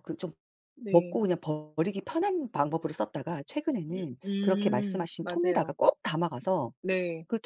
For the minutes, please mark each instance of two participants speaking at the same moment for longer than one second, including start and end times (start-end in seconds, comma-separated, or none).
3.9-5.8